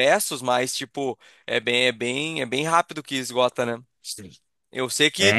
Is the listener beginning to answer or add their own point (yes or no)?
no